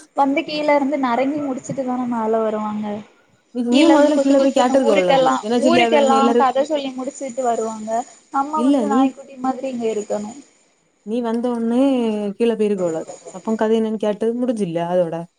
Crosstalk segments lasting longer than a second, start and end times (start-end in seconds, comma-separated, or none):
3.8-6.4